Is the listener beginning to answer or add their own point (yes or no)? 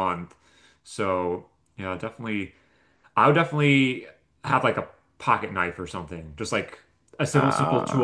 no